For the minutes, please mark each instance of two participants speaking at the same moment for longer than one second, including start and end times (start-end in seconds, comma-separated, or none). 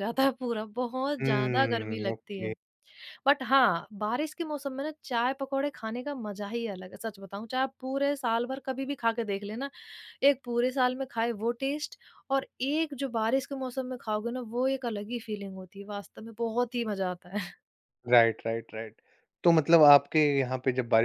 1.2-2.5